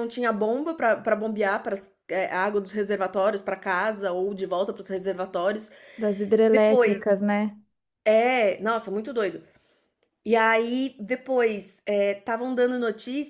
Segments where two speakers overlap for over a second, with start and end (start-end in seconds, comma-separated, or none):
none